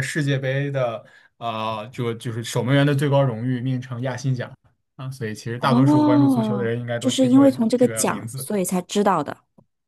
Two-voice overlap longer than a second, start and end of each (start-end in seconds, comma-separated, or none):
5.6-8.4